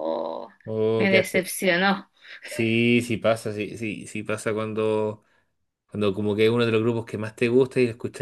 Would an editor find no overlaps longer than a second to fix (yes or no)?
yes